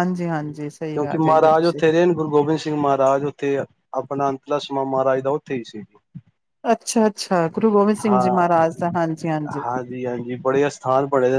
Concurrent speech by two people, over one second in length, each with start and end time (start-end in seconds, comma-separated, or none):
0.5-1.8